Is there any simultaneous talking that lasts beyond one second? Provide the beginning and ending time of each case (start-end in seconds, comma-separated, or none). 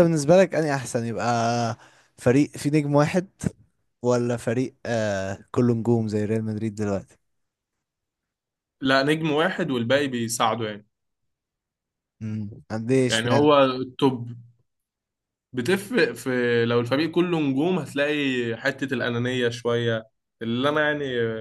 none